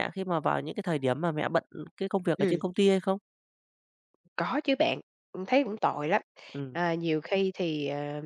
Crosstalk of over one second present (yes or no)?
no